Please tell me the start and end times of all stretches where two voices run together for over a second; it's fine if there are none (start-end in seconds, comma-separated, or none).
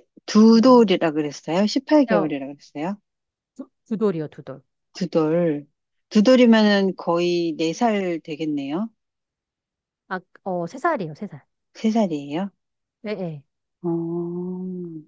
none